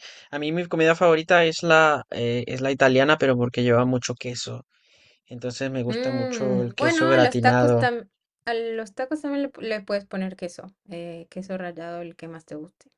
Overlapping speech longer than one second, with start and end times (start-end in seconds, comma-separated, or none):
5.9-7.8